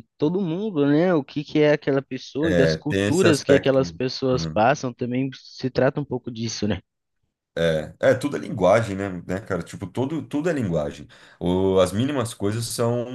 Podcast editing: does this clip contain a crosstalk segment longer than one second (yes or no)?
yes